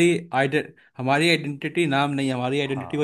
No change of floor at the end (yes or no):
no